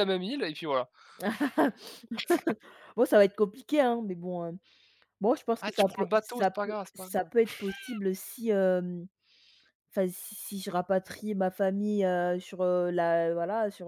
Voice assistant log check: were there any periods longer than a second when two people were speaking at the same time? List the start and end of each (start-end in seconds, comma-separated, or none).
5.6-7.3